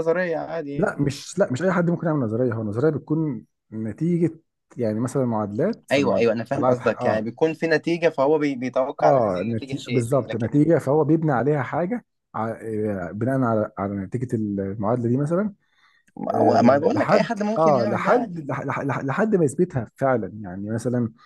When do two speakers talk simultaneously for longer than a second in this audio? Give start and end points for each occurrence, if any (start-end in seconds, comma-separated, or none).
5.9-7.2, 9.0-10.7, 16.3-18.6